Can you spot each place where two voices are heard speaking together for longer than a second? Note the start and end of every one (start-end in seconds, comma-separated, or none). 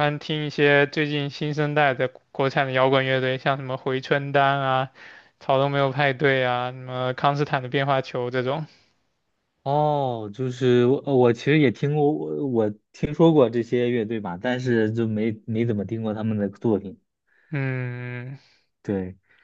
none